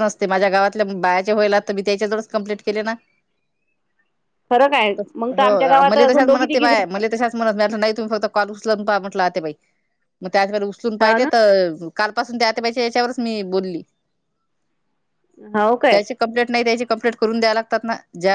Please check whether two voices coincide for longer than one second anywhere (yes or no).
yes